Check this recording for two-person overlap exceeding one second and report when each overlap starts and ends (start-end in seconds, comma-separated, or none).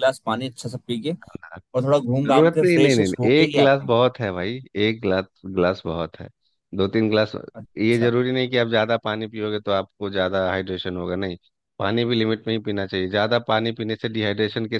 2.2-4.0